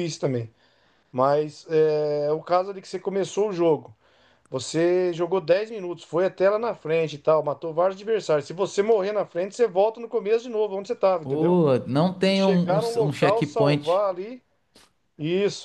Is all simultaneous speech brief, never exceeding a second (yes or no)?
no